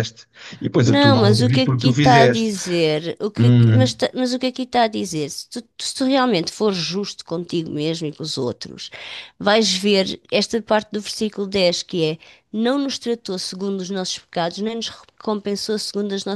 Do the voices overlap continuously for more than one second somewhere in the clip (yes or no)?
yes